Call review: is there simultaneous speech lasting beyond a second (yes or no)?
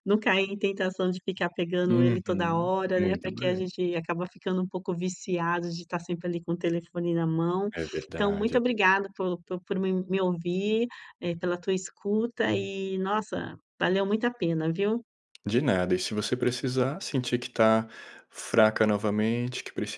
yes